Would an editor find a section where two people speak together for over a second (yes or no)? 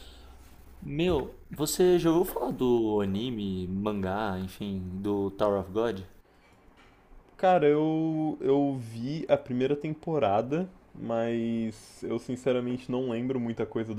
no